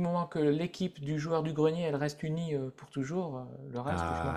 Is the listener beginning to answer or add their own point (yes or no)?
yes